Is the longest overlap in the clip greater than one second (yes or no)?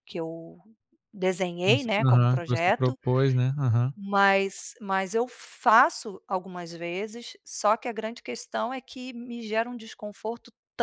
yes